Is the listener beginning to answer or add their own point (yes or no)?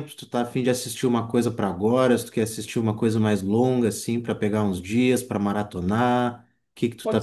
yes